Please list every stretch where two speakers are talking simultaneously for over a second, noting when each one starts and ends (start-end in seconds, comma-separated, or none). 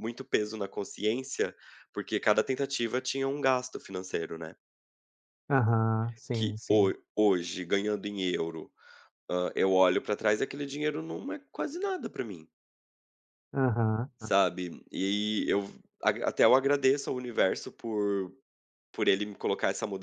none